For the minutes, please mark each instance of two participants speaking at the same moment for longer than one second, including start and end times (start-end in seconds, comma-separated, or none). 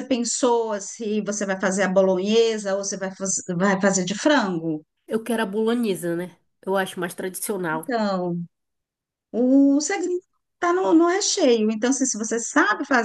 none